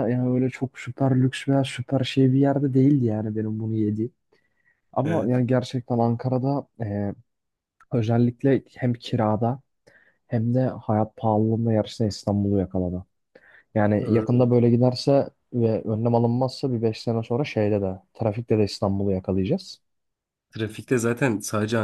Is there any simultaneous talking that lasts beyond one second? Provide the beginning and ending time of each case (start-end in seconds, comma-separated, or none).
none